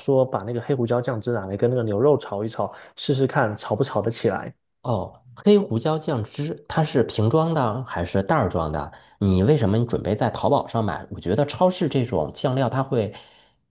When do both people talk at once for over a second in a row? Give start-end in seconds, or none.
none